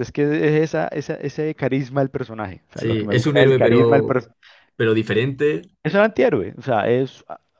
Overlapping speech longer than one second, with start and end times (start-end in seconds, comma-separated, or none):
2.7-4.2